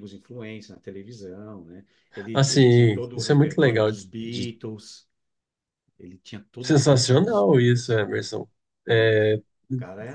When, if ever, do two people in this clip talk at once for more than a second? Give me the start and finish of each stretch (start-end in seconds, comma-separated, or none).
2.3-4.5, 6.6-8.0